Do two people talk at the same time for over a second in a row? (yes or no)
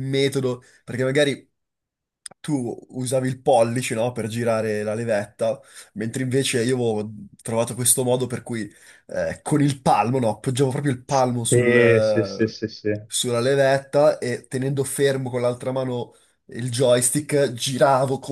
yes